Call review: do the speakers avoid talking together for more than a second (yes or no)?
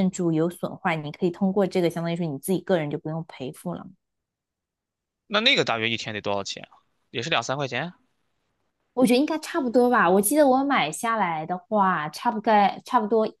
yes